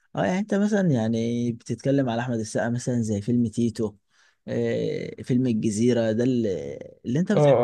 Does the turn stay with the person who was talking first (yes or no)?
no